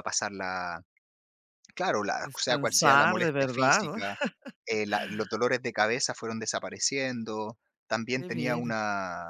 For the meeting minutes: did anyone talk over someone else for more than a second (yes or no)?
yes